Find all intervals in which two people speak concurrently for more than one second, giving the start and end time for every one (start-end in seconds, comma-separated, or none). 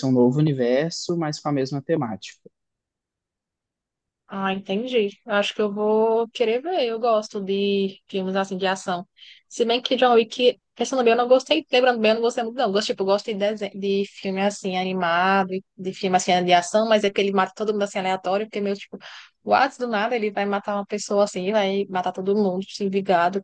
none